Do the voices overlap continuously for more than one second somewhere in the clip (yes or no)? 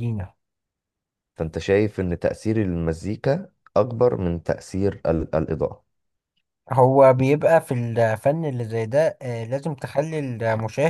no